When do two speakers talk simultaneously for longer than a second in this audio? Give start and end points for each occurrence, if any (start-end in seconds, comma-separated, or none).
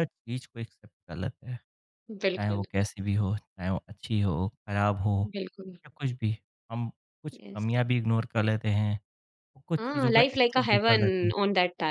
9.8-11.3